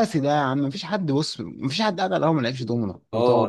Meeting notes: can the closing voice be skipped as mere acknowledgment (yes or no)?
no